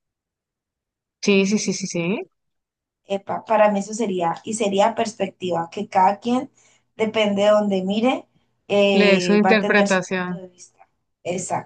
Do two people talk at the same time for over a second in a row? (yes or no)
yes